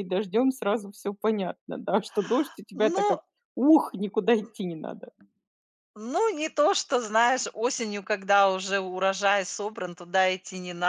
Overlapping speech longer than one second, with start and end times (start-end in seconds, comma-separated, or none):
none